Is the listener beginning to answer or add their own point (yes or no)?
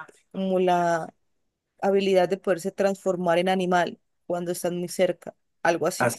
yes